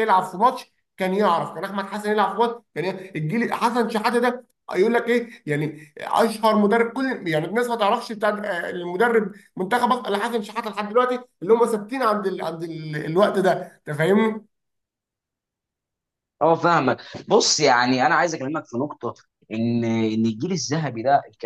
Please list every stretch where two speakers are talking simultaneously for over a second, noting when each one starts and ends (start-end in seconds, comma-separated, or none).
none